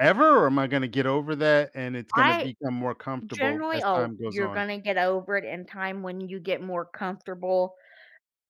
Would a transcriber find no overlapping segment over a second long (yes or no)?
no